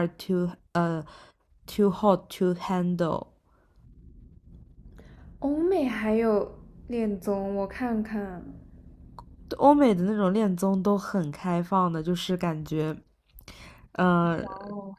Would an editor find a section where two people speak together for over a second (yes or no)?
no